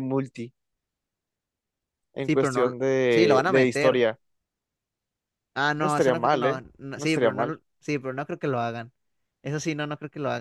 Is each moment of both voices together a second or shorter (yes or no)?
no